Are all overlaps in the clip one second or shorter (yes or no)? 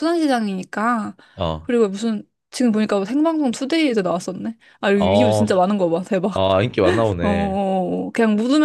yes